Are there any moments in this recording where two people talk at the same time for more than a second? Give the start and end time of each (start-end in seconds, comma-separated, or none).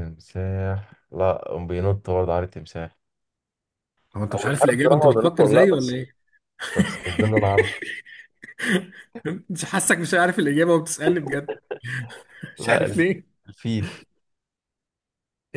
4.3-6.0